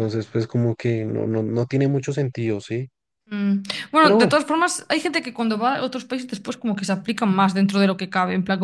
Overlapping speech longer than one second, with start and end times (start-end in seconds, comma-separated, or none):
none